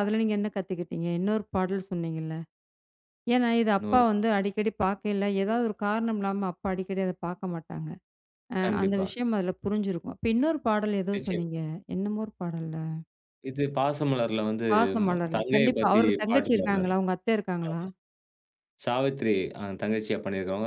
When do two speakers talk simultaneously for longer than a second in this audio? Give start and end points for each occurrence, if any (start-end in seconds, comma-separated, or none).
15.0-16.9